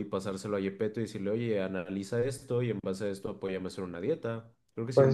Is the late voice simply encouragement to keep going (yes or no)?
no